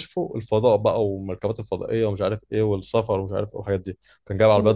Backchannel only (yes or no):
yes